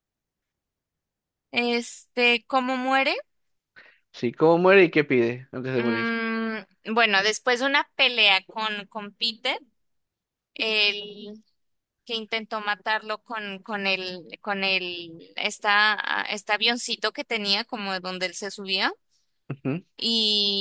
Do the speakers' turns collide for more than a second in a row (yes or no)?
no